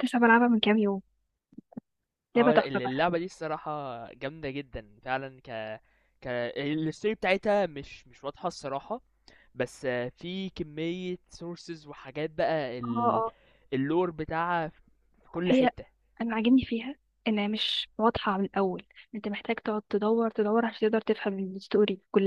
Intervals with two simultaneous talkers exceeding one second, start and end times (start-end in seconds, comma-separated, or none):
none